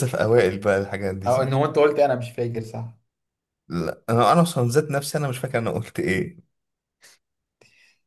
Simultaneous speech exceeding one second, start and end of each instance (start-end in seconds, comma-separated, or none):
none